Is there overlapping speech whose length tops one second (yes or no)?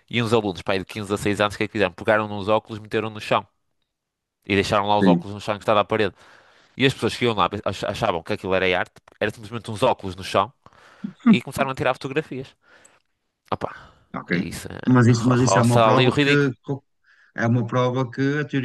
yes